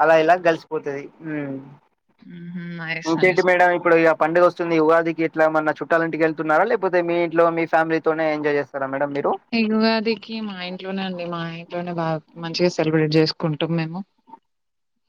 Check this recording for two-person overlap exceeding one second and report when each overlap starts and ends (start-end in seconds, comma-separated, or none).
none